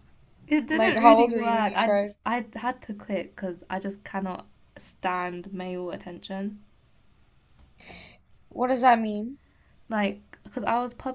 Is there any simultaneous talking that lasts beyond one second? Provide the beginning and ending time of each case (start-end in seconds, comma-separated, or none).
0.7-2.1